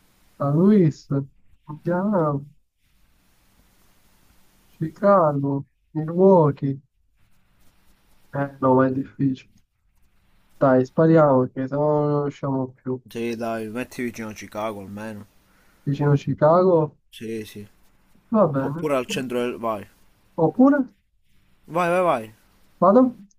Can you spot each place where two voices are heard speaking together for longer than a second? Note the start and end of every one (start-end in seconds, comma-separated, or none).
none